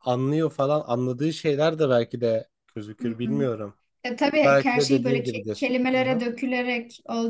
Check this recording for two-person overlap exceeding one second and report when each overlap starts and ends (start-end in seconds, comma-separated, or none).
4.4-6.2